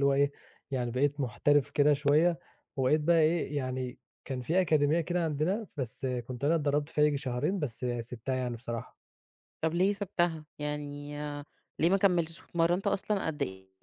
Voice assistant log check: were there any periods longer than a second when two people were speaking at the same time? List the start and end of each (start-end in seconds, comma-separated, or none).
none